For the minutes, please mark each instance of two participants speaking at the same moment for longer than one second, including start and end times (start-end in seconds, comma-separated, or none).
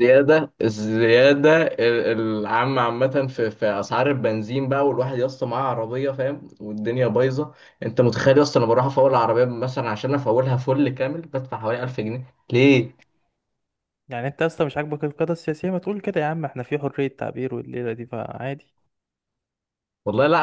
none